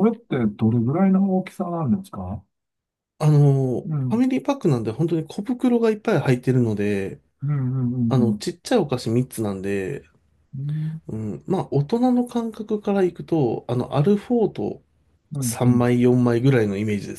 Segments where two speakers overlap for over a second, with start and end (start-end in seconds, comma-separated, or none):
none